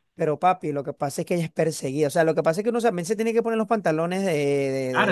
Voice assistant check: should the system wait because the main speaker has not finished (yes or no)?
no